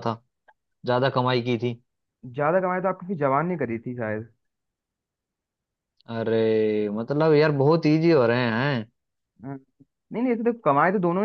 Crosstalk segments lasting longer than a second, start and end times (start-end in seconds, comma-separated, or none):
none